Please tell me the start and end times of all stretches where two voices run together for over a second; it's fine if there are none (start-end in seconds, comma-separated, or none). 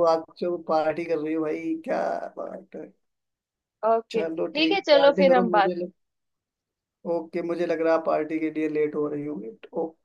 4.1-5.7